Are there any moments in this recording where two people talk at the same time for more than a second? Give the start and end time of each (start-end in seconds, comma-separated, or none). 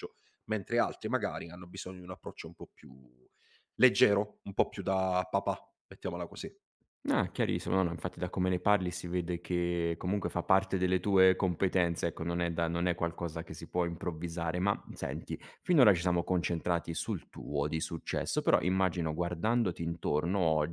none